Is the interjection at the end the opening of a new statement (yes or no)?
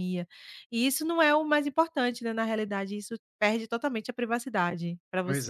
yes